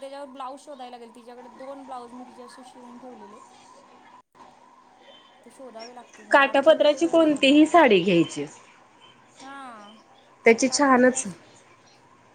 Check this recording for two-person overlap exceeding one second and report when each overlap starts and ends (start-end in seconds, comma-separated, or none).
6.3-7.6